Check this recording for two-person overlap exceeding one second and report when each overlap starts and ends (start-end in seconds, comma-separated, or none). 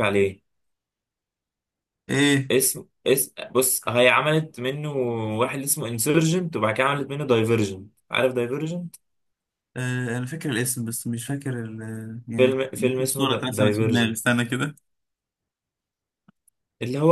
12.4-14.2